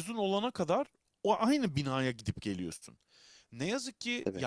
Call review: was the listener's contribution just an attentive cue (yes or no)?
yes